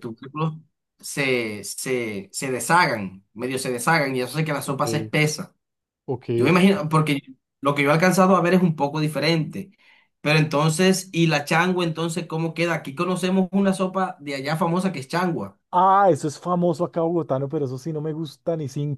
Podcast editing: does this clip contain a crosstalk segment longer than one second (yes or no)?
no